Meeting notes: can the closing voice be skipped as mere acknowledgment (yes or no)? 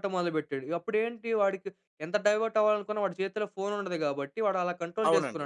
no